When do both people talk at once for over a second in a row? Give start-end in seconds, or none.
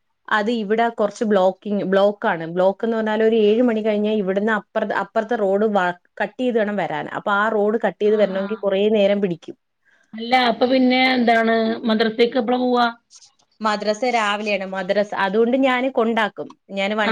none